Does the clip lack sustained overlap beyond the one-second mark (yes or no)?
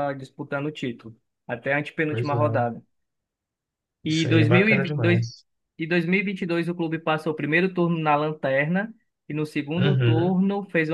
no